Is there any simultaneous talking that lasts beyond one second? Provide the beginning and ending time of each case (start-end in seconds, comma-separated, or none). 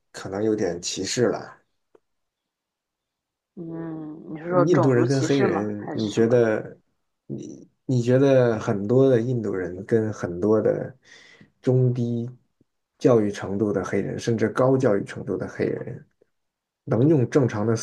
4.7-6.4